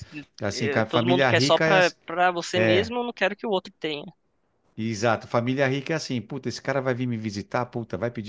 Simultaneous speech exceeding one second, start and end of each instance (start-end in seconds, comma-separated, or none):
0.5-2.0